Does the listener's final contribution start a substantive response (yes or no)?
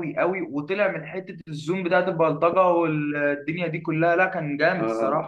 yes